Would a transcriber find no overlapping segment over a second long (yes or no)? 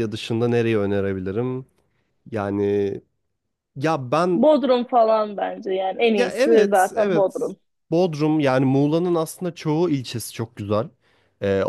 no